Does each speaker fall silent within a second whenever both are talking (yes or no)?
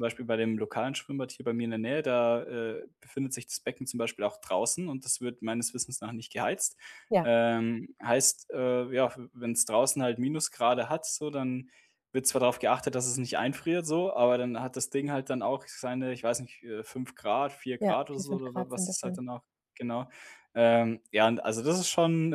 no